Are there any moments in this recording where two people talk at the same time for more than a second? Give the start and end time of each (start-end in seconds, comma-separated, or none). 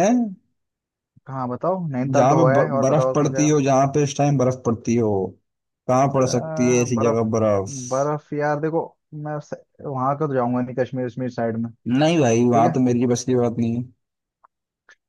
2.1-3.5